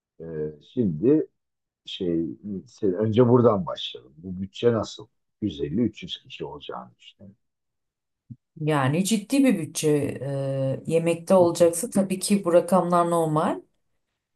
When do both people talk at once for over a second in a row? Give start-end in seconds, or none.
none